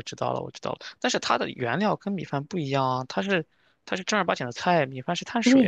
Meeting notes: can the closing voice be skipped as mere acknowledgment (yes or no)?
no